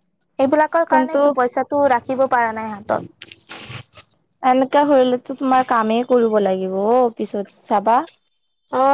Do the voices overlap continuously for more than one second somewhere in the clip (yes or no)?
no